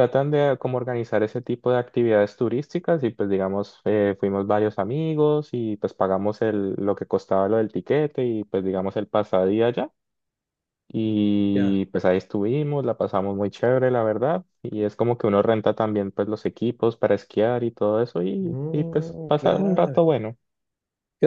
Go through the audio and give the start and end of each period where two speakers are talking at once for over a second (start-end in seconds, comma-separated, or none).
18.4-20.0